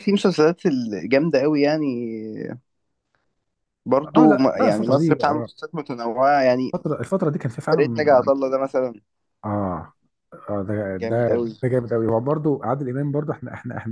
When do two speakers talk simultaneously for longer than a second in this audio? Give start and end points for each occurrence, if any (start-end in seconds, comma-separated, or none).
4.2-5.5